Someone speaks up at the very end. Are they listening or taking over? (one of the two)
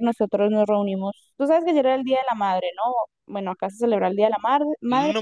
taking over